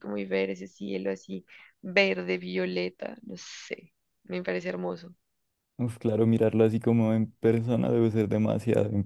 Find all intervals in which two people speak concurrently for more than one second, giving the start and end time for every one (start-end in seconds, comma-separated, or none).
none